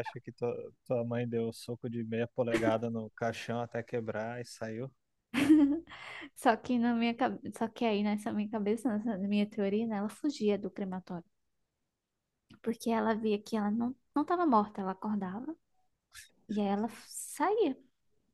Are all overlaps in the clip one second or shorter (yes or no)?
yes